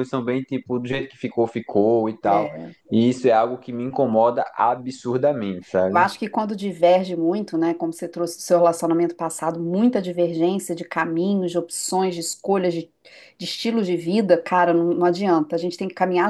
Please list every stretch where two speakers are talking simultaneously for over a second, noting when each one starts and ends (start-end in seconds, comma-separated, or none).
none